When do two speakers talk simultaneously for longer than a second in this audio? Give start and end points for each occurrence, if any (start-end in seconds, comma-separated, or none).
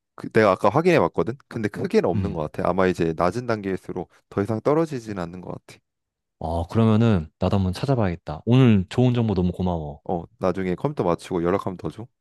none